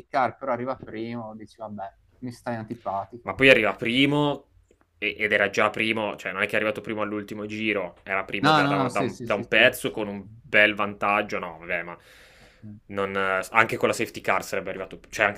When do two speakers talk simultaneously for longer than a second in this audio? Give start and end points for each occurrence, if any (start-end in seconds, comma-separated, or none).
8.4-10.4